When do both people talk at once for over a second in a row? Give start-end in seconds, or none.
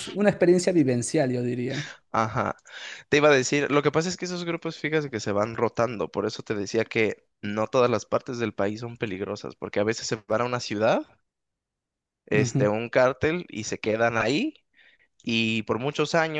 none